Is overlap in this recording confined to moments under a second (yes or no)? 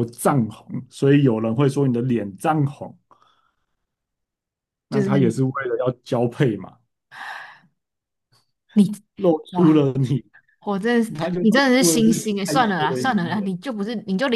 no